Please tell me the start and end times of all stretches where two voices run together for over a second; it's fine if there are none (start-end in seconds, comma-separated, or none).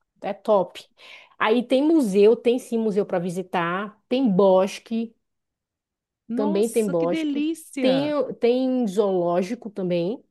6.4-8.2